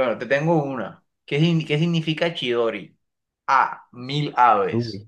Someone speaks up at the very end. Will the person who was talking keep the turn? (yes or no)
yes